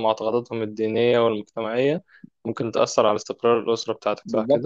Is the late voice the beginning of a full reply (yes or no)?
yes